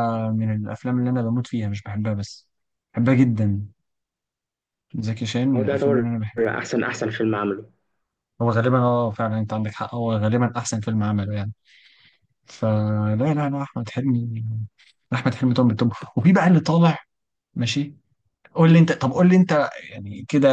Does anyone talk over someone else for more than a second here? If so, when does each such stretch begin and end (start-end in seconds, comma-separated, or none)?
none